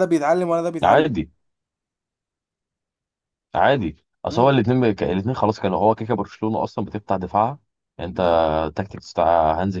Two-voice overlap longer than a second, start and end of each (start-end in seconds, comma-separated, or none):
none